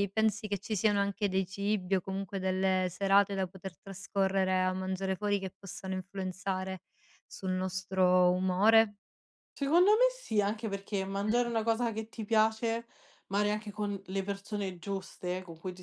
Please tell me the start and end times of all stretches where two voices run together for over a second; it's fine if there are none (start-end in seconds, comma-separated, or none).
none